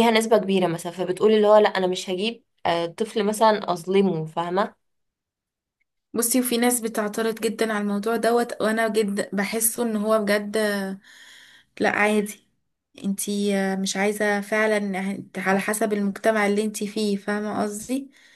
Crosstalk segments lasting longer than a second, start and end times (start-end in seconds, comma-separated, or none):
none